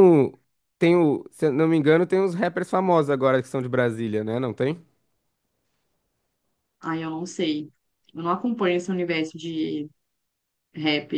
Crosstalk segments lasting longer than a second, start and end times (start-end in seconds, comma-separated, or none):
none